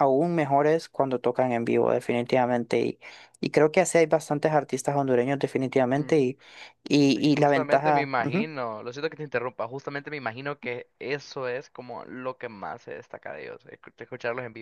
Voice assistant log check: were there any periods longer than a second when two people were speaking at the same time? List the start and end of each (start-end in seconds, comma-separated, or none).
7.2-8.5